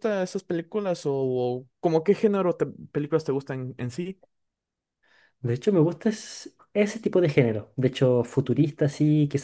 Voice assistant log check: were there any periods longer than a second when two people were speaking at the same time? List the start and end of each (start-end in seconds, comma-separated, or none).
none